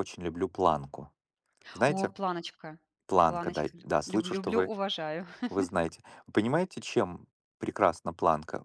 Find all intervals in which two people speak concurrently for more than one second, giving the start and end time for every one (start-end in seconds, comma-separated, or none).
3.2-4.7